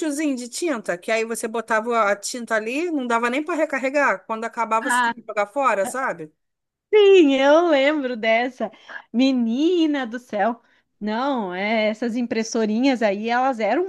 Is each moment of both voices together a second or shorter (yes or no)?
yes